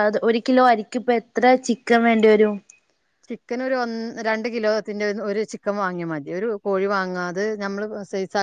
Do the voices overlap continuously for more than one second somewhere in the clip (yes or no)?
no